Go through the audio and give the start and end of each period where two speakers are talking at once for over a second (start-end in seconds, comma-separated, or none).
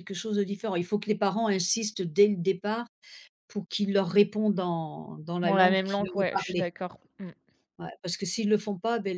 5.4-6.7